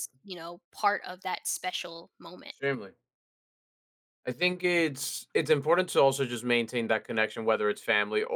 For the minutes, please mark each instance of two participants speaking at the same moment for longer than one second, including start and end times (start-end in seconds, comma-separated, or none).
none